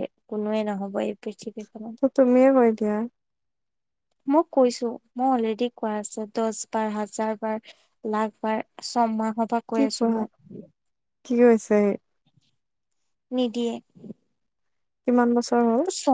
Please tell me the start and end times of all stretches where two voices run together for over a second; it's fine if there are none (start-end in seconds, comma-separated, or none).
none